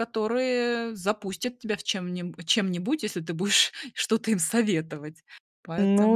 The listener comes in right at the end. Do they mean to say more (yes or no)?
yes